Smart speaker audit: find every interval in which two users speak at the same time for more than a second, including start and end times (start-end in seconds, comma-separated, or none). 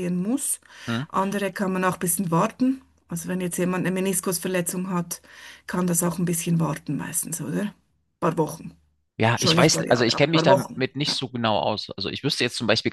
9.3-11.2